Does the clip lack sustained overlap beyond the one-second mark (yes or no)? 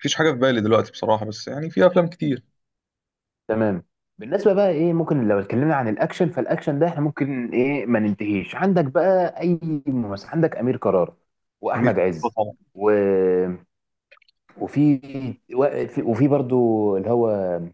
yes